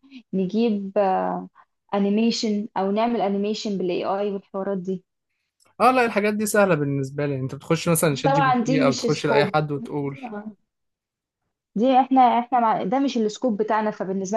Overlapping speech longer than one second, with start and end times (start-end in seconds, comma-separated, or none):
8.1-9.6